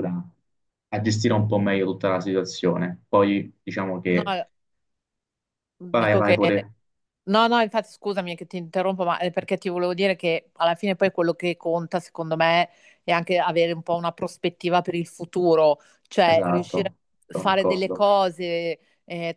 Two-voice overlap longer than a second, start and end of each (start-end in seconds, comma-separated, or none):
16.2-18.1